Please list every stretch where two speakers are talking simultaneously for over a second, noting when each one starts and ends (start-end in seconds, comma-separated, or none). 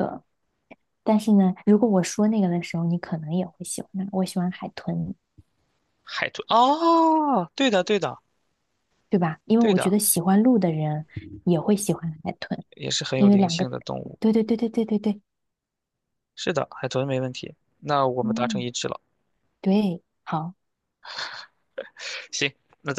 none